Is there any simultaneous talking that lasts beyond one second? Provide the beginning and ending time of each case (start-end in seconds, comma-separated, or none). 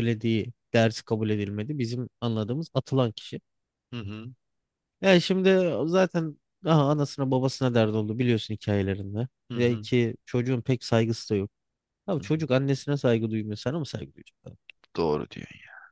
none